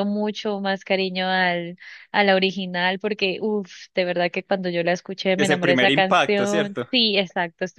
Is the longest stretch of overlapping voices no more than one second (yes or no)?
no